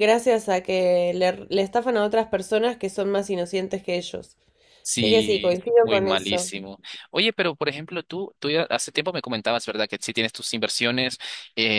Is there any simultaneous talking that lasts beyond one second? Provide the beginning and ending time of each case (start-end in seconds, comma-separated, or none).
4.9-6.5